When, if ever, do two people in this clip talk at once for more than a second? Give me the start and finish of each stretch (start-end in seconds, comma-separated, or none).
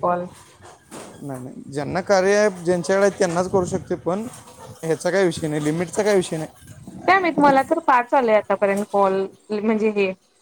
none